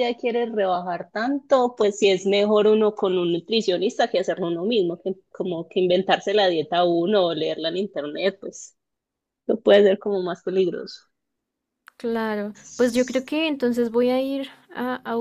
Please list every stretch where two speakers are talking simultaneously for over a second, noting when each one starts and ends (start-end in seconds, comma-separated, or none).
none